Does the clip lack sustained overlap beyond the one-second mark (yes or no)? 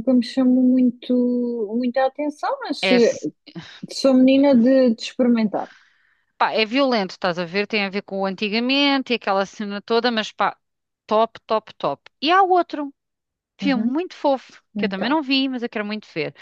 yes